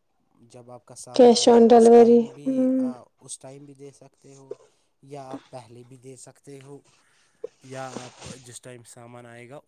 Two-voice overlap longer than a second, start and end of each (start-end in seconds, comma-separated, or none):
1.2-2.7